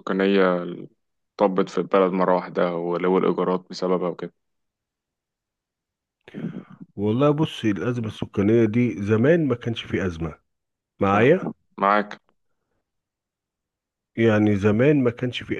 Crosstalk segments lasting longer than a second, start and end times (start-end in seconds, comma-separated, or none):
none